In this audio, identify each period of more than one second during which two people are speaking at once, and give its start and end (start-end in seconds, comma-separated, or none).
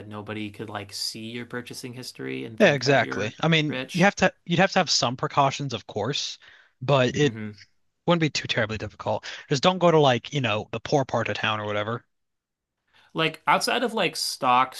2.6-4.1